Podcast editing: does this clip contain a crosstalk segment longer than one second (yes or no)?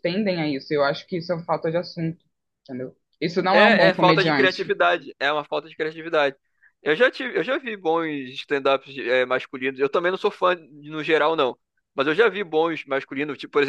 yes